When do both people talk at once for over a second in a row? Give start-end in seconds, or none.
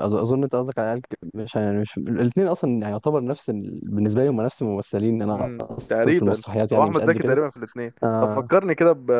5.3-7.4